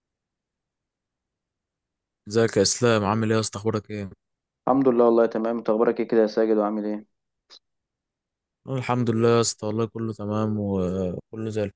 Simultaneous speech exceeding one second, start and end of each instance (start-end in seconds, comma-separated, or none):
none